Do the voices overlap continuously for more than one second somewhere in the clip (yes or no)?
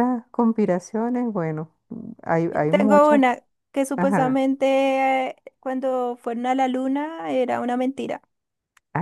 no